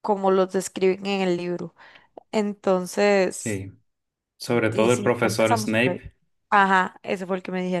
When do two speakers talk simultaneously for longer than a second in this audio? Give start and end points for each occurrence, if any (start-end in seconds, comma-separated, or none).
4.7-6.0